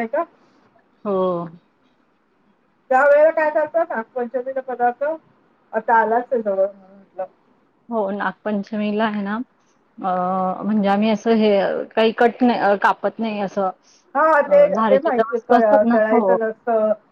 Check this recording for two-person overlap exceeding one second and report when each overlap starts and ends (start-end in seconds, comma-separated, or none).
14.4-16.3